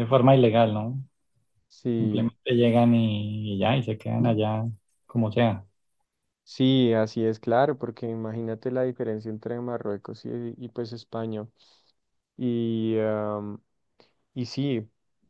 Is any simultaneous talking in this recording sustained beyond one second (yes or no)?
no